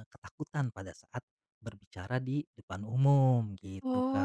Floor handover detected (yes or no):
yes